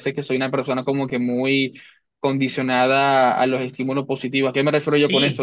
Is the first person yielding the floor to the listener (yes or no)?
yes